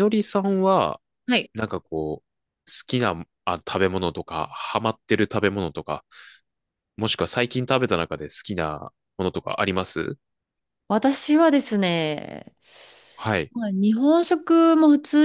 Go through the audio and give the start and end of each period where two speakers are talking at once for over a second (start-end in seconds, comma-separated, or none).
none